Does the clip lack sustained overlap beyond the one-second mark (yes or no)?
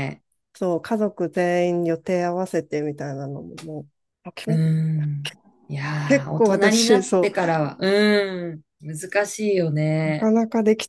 no